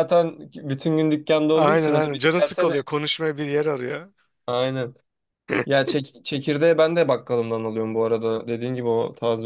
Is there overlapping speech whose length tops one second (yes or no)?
yes